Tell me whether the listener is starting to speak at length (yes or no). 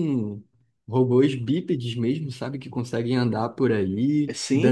no